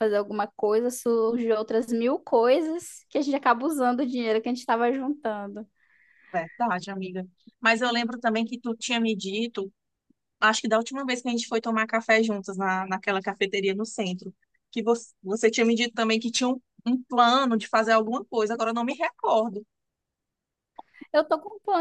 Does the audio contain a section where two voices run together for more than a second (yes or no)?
no